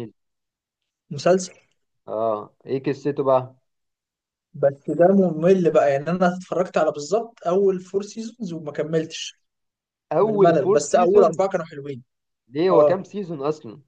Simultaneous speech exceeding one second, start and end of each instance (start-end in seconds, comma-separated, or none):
10.2-11.4